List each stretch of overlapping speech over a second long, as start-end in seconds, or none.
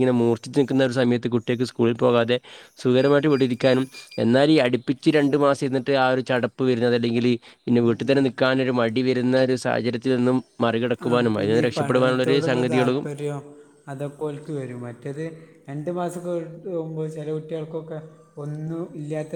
11.1-13.0